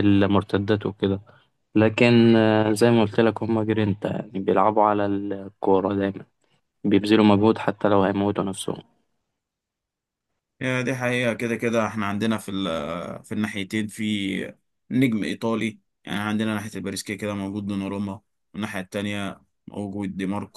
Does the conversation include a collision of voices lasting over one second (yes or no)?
no